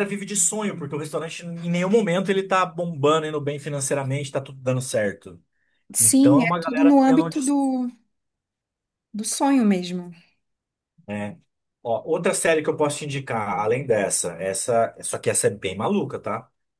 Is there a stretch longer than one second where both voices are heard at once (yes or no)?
yes